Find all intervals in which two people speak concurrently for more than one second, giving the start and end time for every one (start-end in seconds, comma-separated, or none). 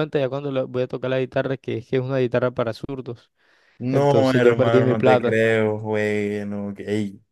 3.9-5.4